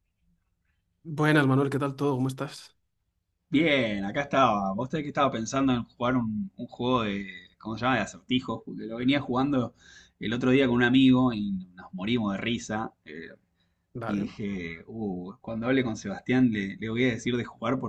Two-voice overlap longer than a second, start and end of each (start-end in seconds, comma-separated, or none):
none